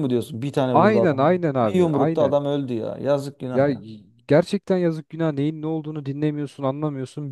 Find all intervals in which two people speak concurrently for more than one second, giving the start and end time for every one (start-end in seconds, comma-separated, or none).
0.7-2.4